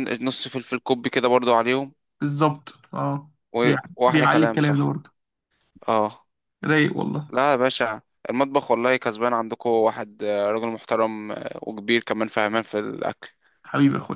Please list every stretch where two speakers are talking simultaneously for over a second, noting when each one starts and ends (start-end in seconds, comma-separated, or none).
3.5-5.0